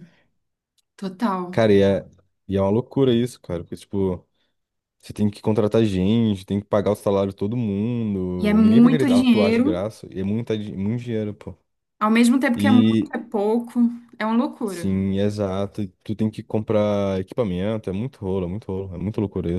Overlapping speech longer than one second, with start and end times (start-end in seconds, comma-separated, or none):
8.4-9.9